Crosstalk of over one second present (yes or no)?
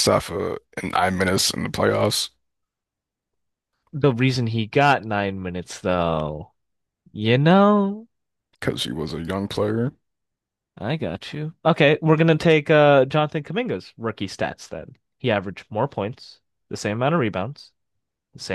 no